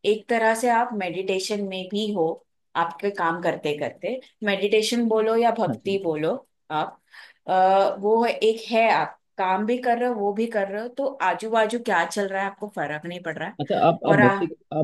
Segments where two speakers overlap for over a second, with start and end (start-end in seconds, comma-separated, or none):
none